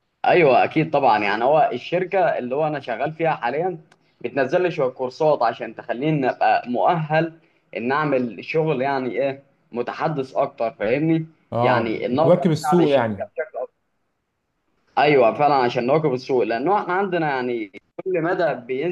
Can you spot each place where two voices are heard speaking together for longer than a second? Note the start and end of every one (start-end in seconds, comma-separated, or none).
11.6-13.3